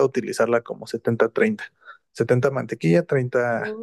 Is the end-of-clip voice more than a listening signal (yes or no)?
no